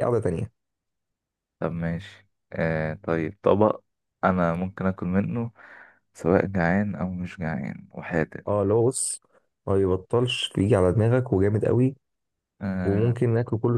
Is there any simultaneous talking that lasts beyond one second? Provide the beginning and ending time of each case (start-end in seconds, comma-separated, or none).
none